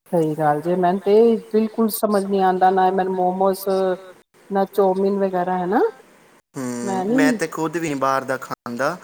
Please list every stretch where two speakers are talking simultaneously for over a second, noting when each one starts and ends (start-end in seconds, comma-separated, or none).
none